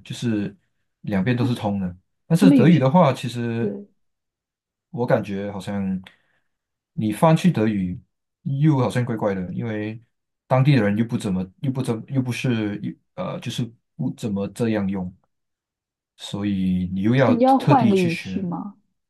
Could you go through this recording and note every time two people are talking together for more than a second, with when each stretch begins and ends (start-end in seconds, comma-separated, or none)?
17.2-18.5